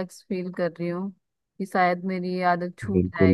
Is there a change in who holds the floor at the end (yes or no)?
yes